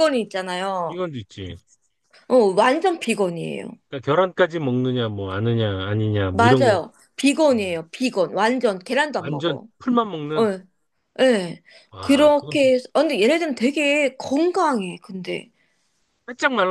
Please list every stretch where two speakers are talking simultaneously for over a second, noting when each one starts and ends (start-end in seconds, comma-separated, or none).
none